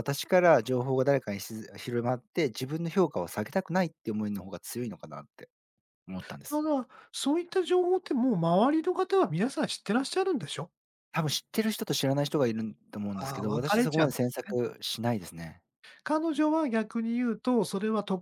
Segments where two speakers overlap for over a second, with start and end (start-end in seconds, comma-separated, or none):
13.1-14.6